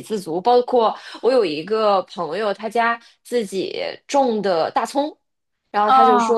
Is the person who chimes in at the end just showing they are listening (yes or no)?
yes